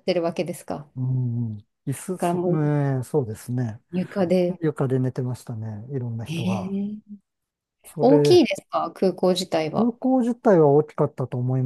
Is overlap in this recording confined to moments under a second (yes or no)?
yes